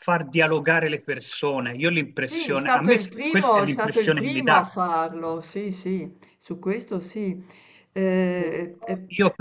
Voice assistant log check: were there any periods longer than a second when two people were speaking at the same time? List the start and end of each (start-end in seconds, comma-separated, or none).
2.2-4.7